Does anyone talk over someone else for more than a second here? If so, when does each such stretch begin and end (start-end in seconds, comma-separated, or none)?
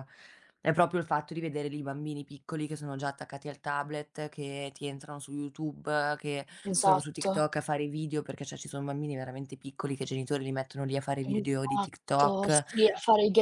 11.2-12.6